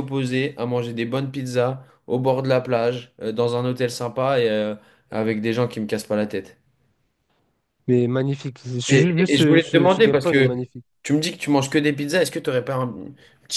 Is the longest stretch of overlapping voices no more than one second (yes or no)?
no